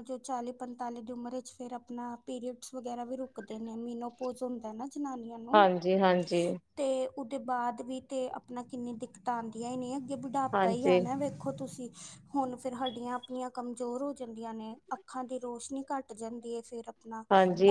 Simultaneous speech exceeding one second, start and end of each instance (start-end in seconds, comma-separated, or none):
none